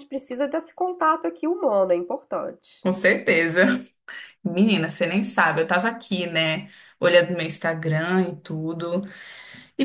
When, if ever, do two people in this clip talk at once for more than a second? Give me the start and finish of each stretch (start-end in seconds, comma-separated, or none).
none